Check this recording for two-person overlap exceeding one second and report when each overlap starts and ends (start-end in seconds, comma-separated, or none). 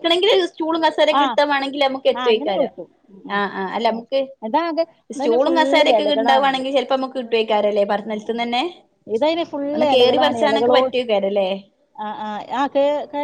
5.2-6.7